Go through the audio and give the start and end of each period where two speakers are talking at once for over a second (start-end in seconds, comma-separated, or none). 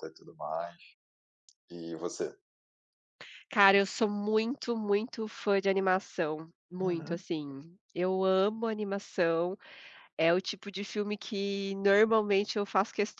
none